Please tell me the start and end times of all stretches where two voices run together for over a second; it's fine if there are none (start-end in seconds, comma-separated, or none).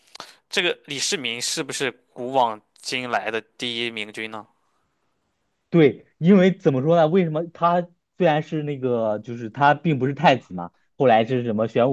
none